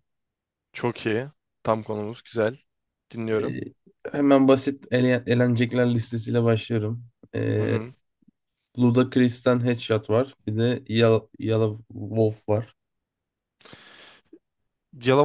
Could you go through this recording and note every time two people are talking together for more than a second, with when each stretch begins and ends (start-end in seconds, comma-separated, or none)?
none